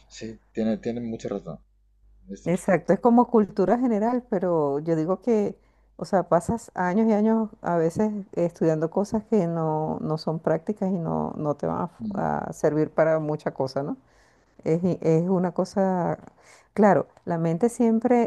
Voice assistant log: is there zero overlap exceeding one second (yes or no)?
yes